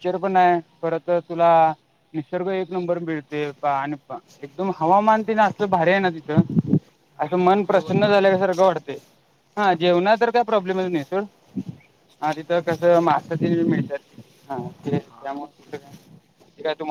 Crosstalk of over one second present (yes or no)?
yes